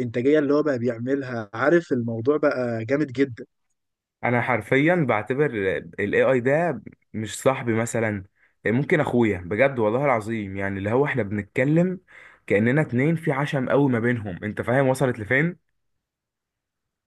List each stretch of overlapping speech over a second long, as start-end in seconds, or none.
none